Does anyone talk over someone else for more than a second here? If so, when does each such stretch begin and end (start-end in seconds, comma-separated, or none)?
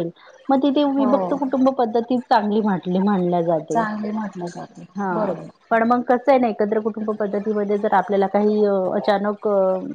none